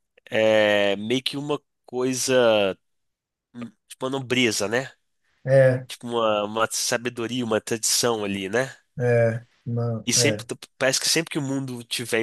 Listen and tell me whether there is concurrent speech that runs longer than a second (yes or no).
no